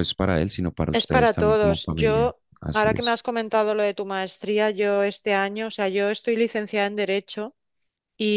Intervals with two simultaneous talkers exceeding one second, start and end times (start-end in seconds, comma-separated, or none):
0.9-3.2